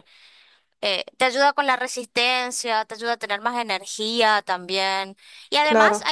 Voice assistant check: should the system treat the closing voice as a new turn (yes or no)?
no